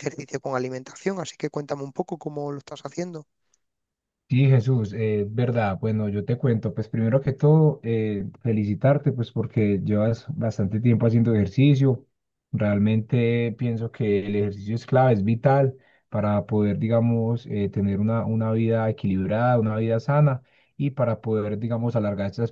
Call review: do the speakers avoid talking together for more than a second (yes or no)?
yes